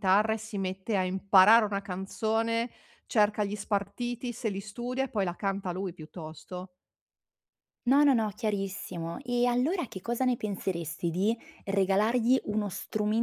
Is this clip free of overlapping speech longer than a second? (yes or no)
yes